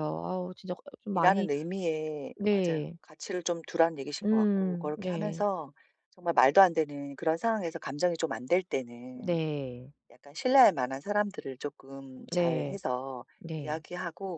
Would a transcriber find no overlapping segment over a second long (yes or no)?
no